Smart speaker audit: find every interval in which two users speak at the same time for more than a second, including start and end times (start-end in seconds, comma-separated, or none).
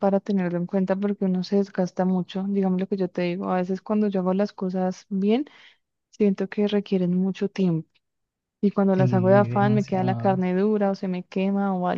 8.9-10.4